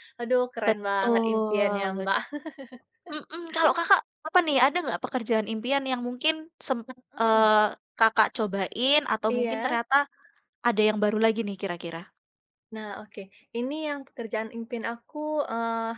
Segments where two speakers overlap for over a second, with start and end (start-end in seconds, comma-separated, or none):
0.6-2.0